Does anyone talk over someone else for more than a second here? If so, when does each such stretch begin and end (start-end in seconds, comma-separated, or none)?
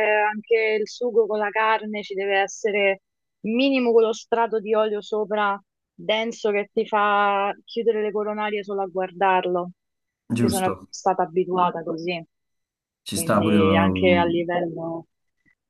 13.1-14.4